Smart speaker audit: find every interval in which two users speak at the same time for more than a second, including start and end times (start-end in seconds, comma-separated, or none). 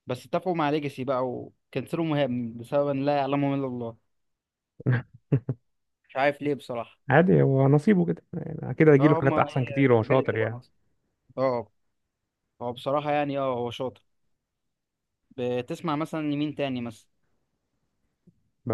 9.0-10.6